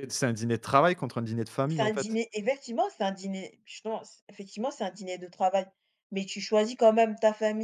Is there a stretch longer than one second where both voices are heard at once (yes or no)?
no